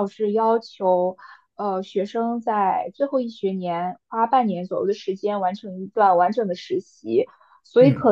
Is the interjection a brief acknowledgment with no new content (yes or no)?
yes